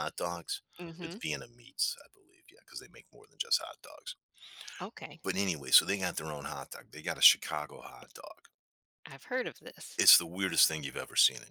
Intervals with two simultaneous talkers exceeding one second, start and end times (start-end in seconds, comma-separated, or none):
none